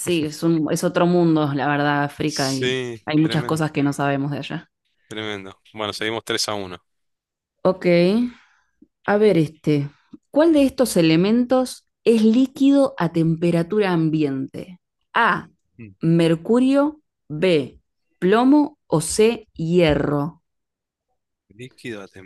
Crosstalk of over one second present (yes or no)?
yes